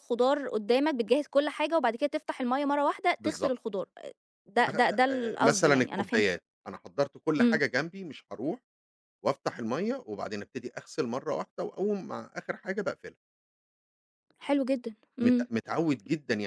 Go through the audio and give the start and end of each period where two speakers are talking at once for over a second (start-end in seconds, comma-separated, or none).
5.1-6.4